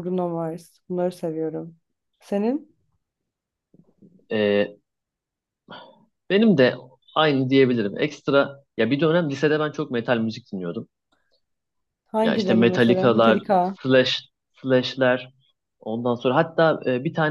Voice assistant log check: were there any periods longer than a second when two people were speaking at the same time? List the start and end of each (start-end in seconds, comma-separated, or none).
12.2-13.8